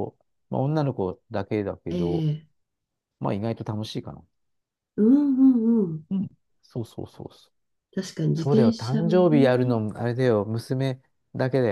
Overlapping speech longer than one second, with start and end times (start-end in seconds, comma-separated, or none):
8.3-9.8